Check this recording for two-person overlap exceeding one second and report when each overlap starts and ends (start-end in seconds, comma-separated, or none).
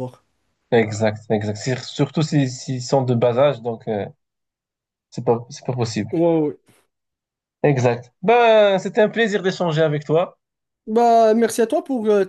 none